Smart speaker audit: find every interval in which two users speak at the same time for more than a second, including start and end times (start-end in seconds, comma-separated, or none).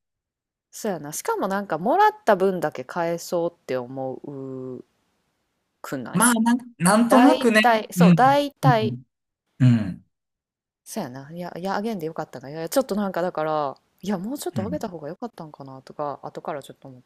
7.1-8.9